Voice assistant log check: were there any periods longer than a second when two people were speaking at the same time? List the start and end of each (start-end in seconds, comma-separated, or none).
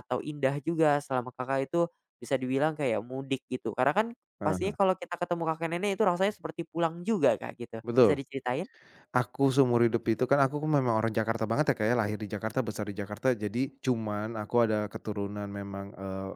none